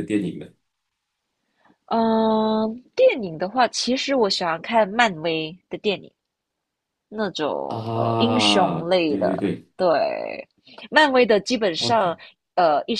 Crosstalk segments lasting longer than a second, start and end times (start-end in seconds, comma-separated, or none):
7.7-9.7